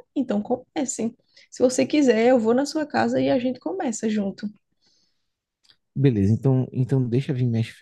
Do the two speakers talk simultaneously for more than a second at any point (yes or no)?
no